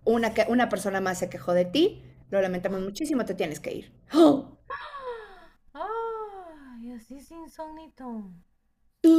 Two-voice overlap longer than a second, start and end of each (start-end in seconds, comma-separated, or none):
none